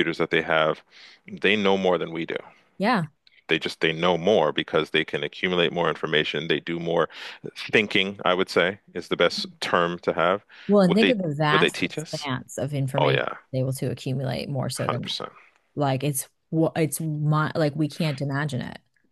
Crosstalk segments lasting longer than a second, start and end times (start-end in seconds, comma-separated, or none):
10.8-12.3